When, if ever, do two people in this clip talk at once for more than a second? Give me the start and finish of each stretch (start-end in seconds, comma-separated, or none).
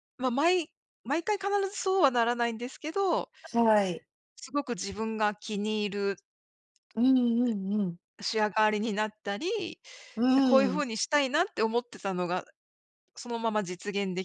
none